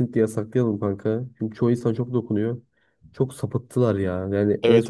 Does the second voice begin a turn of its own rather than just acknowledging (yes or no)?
no